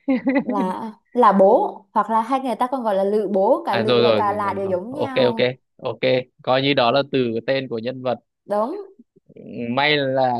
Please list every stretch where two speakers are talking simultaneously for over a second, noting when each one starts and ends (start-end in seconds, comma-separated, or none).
3.7-5.3